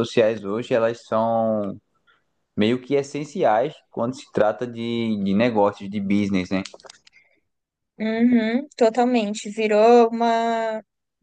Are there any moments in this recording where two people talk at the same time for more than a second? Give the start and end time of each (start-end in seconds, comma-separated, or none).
none